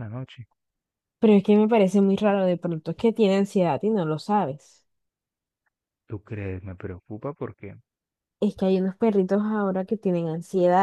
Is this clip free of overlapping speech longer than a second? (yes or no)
yes